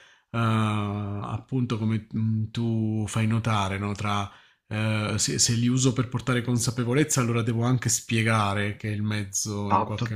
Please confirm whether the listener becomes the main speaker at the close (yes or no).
no